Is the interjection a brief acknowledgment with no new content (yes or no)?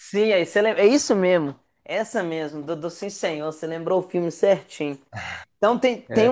yes